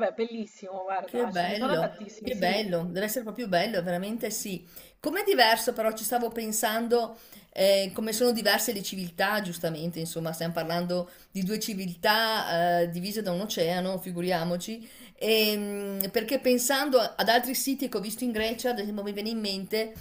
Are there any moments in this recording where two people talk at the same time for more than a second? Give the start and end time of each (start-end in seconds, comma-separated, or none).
1.0-2.8